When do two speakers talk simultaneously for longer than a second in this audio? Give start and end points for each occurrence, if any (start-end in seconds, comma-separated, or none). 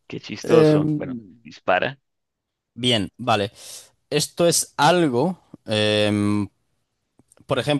none